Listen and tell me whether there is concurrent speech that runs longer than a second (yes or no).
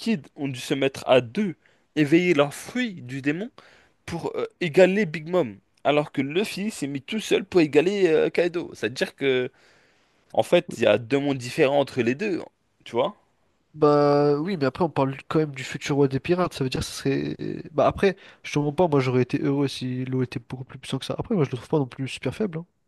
no